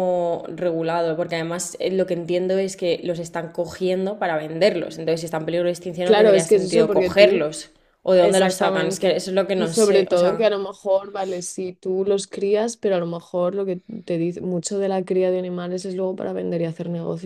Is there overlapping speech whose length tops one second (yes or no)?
yes